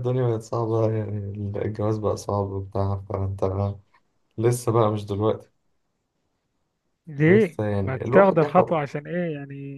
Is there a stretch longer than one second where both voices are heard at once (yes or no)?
yes